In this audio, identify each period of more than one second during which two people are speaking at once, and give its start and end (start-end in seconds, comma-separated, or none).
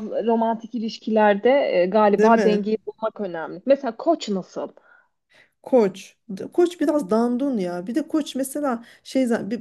none